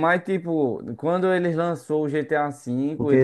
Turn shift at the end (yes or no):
yes